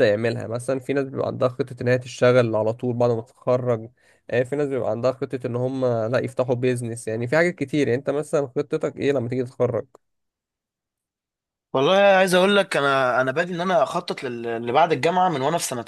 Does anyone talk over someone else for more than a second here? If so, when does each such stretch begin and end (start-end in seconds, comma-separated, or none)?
none